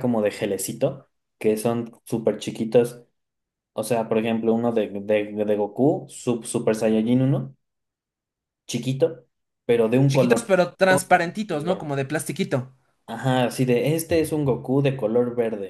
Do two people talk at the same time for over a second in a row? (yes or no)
yes